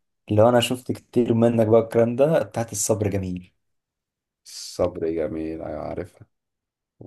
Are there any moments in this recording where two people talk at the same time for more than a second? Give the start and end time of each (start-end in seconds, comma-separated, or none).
none